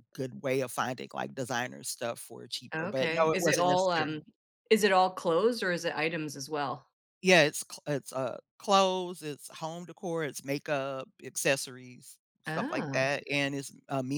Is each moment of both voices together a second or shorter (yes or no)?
no